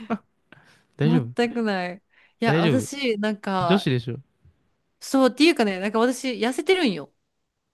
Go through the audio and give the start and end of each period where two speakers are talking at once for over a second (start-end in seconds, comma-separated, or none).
none